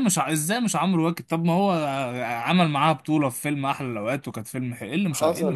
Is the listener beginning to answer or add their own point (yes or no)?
yes